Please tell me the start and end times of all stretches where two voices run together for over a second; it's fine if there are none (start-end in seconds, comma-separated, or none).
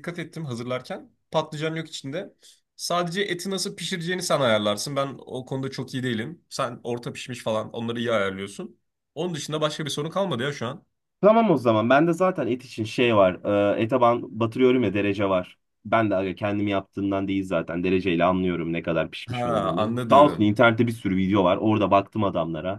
19.3-20.5